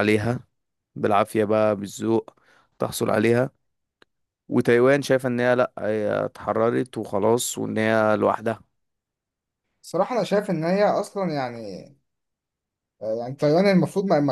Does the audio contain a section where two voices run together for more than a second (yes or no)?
no